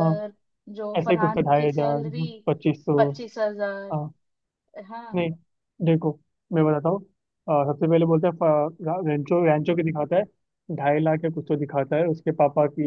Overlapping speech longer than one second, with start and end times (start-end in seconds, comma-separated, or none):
1.0-2.3